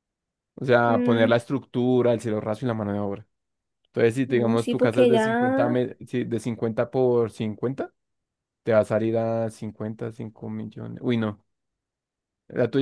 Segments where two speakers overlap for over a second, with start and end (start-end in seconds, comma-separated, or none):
4.3-5.8